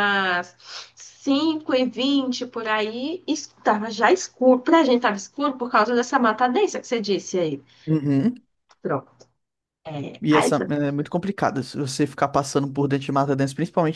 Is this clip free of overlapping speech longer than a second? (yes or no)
yes